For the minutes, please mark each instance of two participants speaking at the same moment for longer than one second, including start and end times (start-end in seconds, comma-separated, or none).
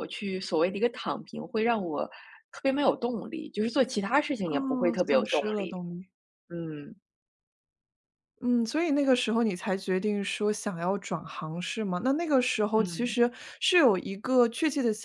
4.4-5.7